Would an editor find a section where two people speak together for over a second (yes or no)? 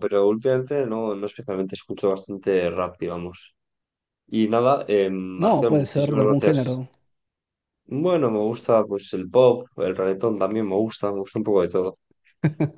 yes